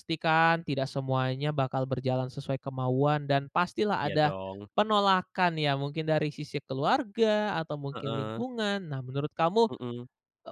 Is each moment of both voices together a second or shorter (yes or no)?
yes